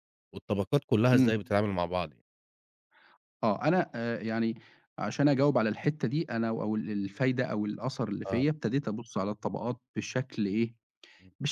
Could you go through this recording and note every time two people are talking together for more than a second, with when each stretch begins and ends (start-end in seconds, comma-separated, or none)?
none